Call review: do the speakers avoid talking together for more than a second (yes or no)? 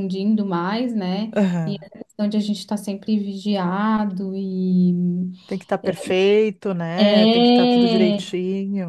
no